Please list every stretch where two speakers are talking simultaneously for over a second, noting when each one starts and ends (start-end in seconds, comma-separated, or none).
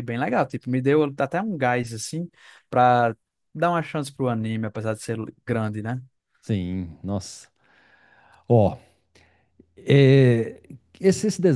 none